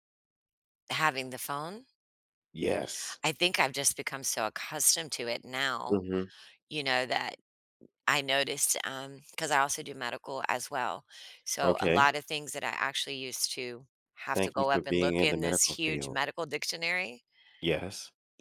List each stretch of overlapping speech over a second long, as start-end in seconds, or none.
14.3-16.2